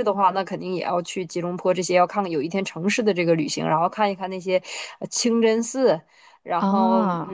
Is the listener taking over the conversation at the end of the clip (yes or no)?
no